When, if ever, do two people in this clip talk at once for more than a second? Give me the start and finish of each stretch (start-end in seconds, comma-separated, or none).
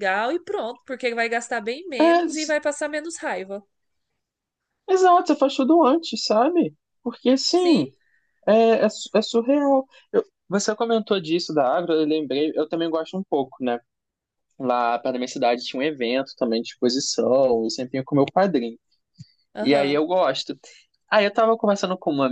none